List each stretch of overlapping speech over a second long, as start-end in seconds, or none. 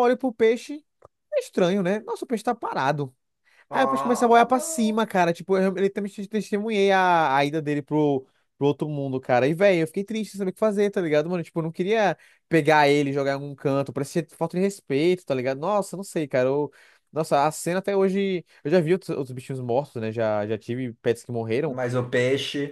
3.7-5.0